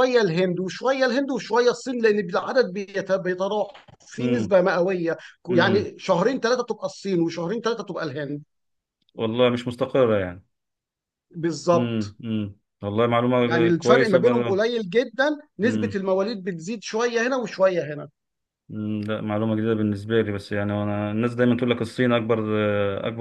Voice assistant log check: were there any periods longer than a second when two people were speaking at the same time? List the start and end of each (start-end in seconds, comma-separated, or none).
13.4-14.7